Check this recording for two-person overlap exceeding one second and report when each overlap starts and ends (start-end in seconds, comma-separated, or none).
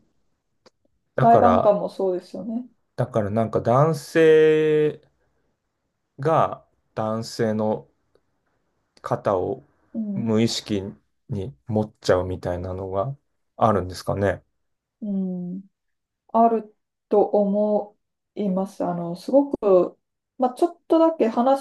none